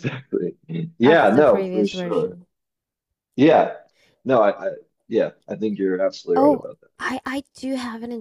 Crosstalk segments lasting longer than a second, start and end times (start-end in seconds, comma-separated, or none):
1.0-2.4